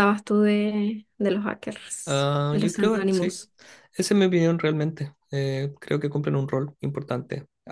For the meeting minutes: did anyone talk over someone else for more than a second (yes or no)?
yes